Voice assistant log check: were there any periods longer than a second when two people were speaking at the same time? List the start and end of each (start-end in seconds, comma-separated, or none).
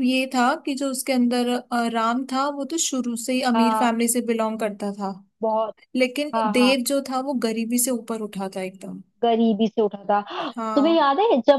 none